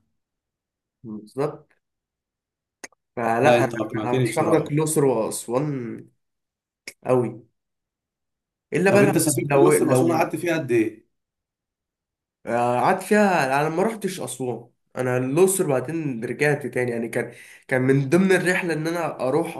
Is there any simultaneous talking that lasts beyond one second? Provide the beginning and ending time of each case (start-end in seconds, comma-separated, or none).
3.4-4.7, 8.9-10.3